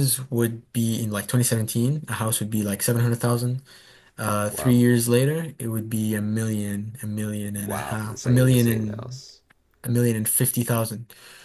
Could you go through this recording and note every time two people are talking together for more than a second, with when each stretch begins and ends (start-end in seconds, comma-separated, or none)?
7.5-9.2